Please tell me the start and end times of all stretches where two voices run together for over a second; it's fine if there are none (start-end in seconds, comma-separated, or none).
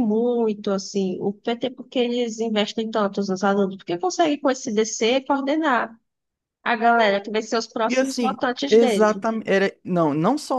7.9-9.2